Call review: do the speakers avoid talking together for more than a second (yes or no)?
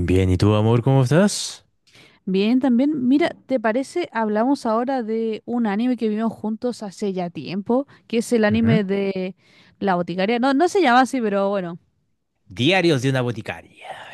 yes